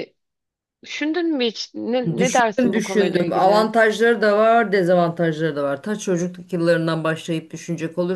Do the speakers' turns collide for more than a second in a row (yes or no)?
yes